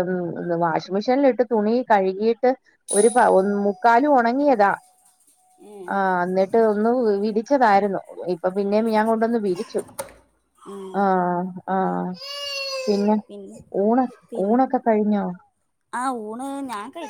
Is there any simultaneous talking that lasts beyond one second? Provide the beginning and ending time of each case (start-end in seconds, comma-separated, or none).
none